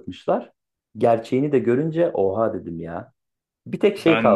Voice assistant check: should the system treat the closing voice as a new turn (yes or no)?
no